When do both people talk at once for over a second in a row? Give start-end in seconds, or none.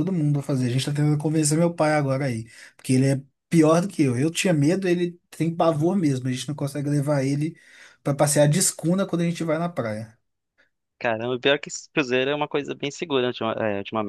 none